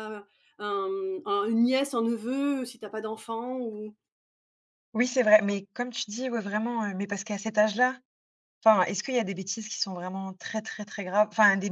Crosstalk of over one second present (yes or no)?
no